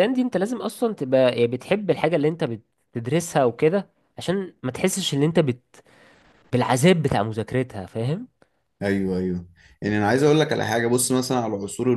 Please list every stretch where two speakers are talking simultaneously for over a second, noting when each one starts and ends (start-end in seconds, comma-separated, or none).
none